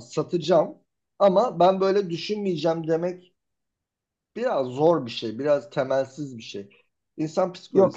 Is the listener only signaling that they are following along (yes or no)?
no